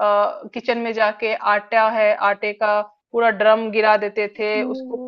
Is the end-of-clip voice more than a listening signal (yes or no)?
no